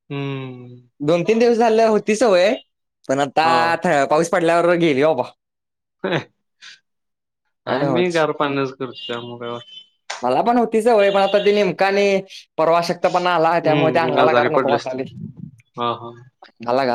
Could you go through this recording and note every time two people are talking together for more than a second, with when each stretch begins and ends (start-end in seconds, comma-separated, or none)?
13.7-15.0